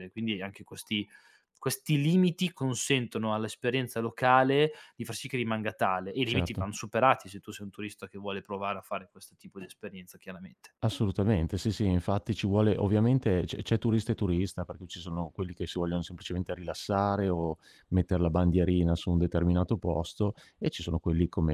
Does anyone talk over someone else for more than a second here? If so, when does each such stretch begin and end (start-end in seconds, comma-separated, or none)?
none